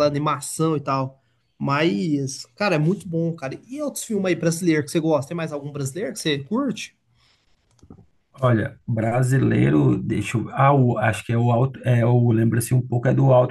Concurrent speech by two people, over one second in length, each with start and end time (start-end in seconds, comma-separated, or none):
none